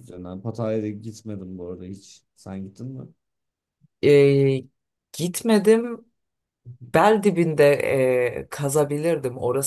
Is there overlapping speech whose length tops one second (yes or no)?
no